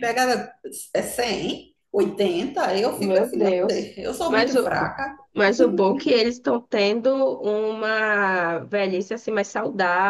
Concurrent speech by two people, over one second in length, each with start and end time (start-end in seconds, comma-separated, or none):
3.0-4.7